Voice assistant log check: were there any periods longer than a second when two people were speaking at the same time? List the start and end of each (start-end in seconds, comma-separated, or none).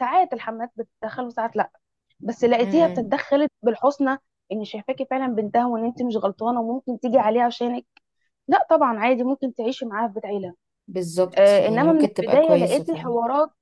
11.3-13.1